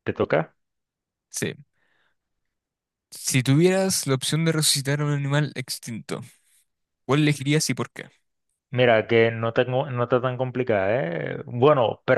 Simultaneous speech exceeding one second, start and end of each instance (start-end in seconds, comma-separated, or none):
none